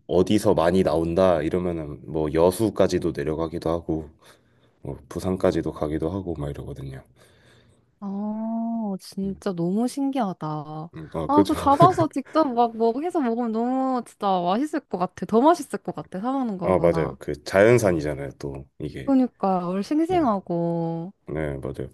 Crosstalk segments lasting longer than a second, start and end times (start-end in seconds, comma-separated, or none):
none